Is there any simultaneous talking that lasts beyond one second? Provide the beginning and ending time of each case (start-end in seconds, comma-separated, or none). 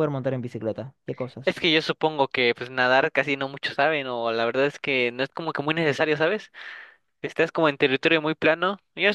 none